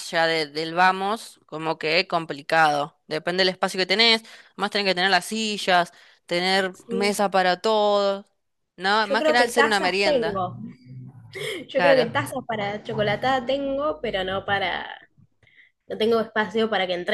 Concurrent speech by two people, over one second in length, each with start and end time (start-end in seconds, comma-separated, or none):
9.0-10.5